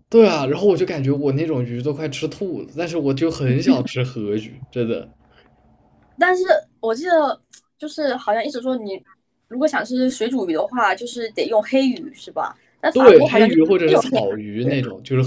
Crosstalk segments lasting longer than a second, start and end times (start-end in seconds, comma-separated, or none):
12.9-14.8